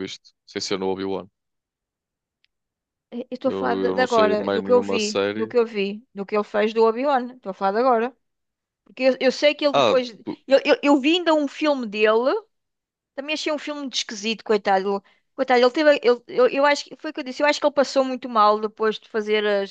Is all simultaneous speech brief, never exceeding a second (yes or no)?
no